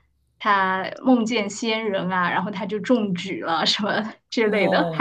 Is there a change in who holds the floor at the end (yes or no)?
yes